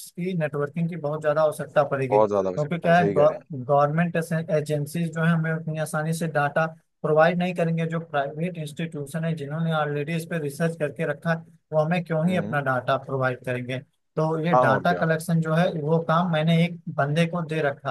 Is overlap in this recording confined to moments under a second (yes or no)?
no